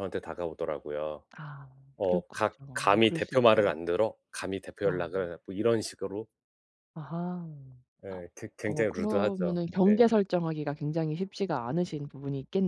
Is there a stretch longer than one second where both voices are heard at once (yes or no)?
yes